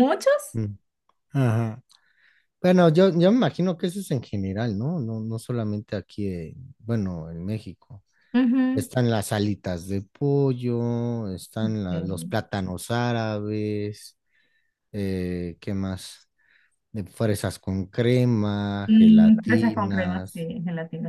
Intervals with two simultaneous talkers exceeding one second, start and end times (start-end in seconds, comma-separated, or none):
18.9-20.5